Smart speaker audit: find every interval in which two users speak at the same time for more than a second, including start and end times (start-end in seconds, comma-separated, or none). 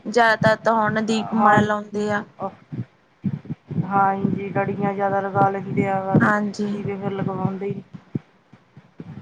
none